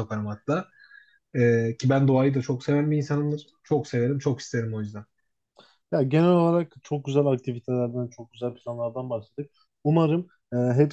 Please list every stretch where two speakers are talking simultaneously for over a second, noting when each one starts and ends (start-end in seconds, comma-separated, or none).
none